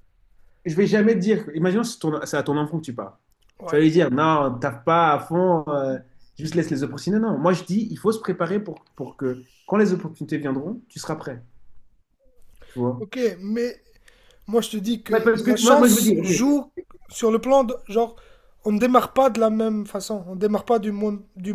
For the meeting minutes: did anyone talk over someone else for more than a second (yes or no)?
yes